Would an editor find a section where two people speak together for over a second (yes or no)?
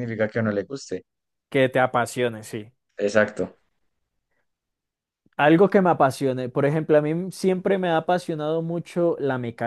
no